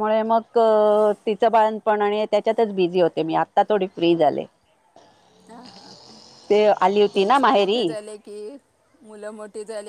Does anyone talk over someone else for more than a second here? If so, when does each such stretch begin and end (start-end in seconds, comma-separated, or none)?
none